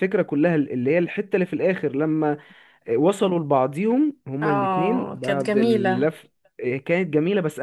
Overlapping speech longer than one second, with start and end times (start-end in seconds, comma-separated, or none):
4.4-6.1